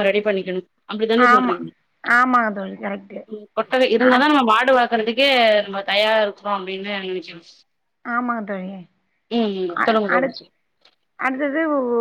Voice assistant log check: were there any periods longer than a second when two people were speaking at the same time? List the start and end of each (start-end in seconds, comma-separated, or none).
none